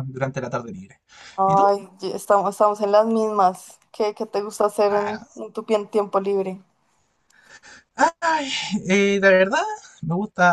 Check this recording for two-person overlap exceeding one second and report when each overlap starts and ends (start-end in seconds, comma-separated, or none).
none